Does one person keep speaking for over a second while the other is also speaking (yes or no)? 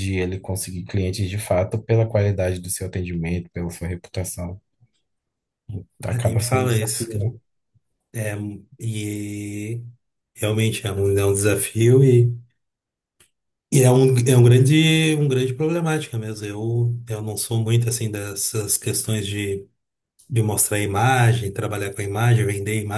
yes